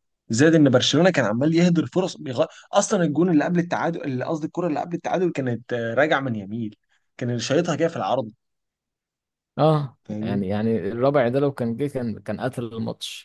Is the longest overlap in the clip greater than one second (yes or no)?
no